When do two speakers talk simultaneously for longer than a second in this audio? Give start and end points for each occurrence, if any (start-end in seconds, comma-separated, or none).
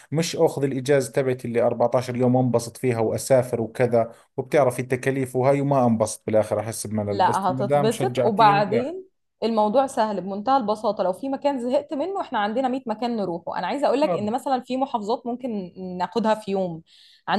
7.1-8.9